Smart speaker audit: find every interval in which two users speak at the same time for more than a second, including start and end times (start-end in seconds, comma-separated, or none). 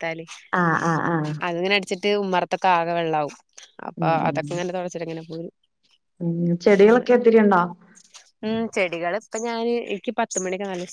none